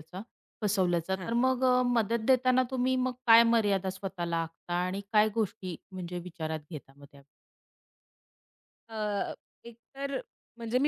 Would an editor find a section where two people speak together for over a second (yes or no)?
no